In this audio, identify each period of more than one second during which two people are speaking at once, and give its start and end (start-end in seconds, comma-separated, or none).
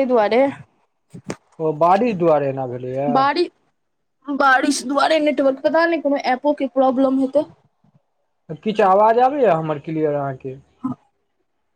none